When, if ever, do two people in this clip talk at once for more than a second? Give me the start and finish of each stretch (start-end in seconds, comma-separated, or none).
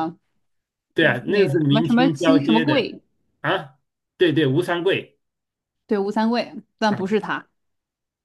1.2-2.9